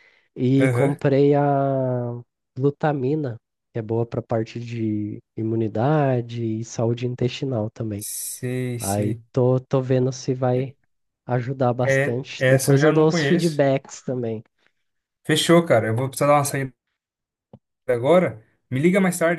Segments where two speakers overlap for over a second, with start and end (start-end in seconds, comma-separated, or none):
11.8-13.6